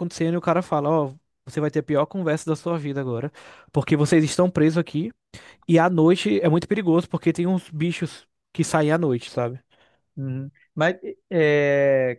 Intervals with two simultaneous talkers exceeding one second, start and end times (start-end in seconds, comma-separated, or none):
none